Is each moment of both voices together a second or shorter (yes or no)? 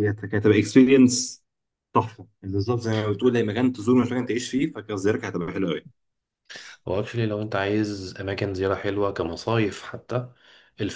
yes